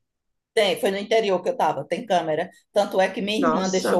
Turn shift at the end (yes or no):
no